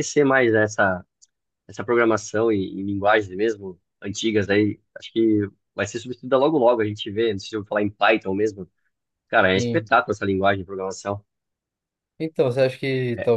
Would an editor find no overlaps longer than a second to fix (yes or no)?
yes